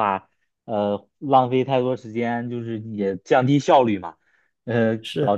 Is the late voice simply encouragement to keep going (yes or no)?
yes